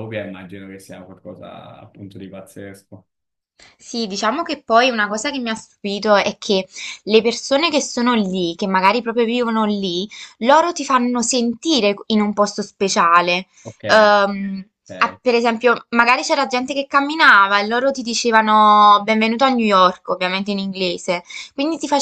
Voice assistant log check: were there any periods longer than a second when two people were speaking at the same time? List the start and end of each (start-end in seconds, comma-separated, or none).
none